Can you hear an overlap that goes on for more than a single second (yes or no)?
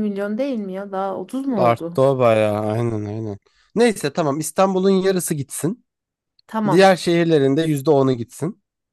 no